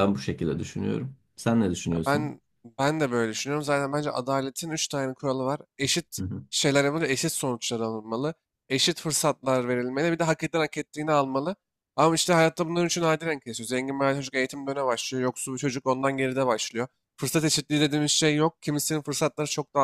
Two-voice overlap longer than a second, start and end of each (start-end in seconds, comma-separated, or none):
none